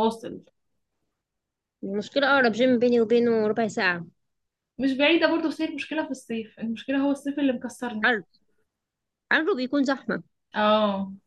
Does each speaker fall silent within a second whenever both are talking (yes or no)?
yes